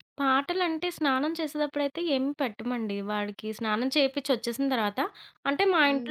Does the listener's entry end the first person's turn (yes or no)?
yes